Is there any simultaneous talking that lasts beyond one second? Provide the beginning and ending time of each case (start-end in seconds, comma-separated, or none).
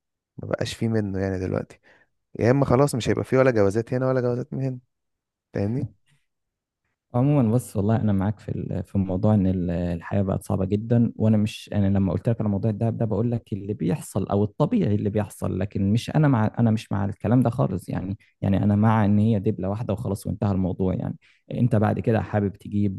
none